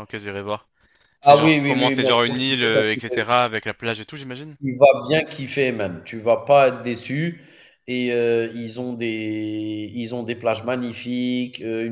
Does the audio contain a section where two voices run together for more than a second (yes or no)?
yes